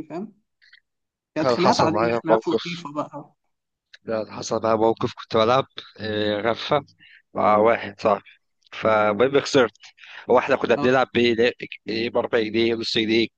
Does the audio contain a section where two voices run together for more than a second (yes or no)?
yes